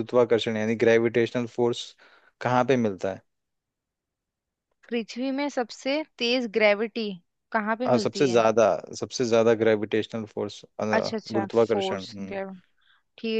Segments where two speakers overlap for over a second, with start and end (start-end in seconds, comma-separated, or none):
11.0-12.3